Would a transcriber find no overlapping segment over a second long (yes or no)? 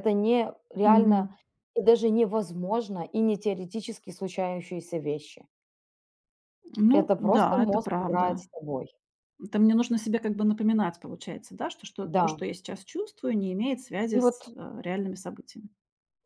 no